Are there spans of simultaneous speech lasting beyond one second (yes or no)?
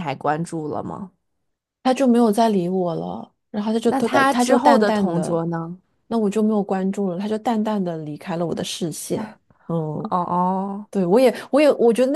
yes